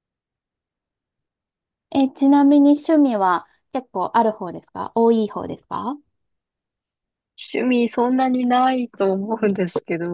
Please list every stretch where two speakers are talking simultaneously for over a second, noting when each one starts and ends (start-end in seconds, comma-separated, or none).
none